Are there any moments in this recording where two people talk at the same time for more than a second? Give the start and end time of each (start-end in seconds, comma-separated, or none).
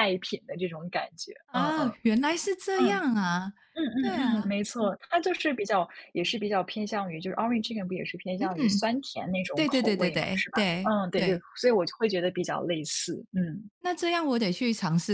9.5-11.4